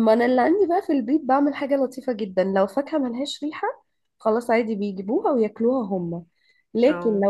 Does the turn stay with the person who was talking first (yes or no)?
yes